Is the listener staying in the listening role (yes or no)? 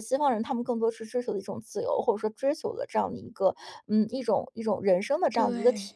yes